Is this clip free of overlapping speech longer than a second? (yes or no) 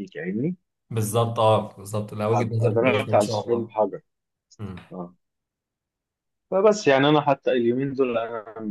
no